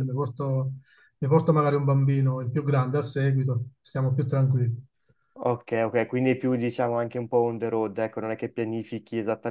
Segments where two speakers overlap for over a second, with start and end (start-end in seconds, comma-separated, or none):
none